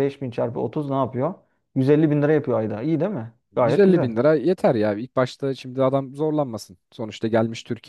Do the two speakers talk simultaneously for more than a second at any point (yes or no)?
no